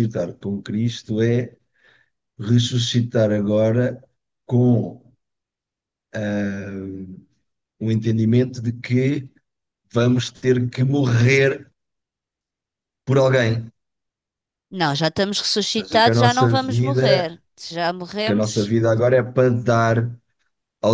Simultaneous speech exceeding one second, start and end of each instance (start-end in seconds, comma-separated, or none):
15.7-17.3